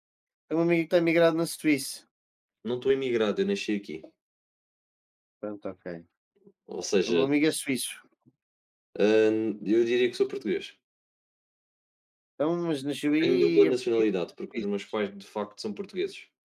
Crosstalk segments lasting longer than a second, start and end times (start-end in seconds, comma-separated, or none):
13.2-15.0